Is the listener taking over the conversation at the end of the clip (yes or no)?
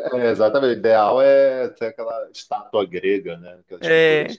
no